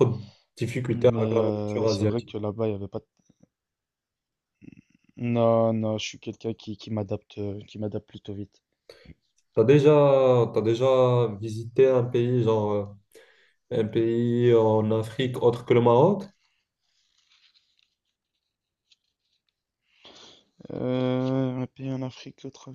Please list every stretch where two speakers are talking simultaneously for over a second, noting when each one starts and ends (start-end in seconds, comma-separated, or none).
0.9-2.4